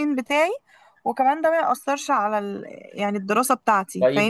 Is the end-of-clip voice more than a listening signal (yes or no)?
yes